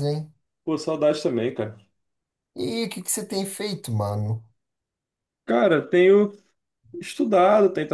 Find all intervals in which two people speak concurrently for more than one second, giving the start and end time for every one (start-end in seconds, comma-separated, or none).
none